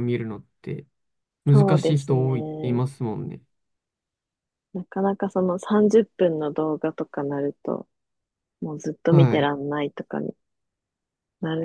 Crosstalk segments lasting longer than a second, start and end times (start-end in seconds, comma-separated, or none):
1.5-2.8